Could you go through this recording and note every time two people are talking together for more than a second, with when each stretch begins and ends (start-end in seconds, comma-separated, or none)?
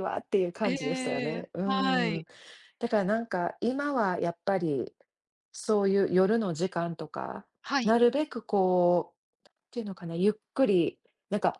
0.6-2.2